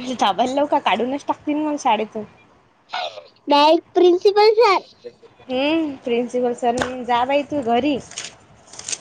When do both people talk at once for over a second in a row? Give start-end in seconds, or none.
none